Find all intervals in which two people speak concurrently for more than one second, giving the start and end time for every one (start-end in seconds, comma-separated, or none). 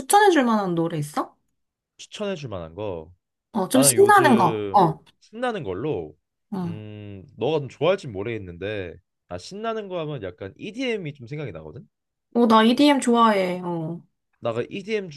3.7-5.0